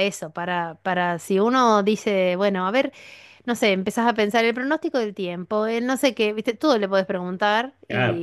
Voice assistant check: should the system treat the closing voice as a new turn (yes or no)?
yes